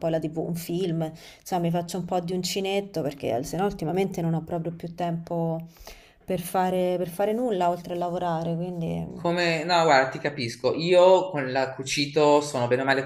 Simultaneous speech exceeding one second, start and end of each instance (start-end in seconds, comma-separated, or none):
none